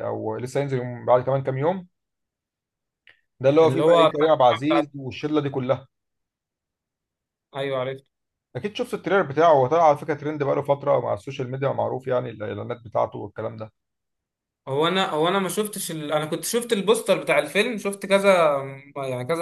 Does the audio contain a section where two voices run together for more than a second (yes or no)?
yes